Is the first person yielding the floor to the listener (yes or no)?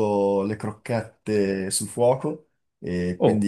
no